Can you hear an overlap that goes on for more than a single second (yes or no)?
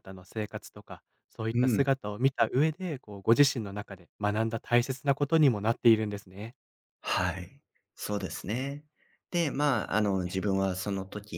no